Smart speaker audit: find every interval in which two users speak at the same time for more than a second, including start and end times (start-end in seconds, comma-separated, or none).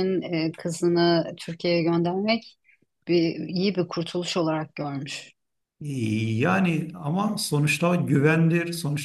none